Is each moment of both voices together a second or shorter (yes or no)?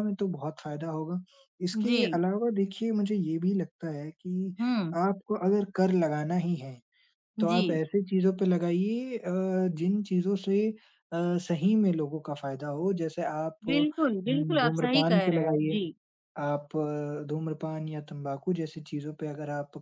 no